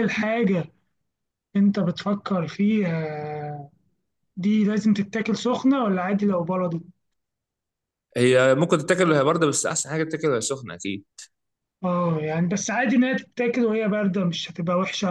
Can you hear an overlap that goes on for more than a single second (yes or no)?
no